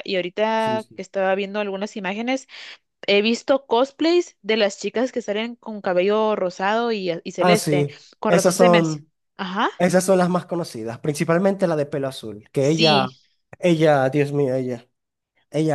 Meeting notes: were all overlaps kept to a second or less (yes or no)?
no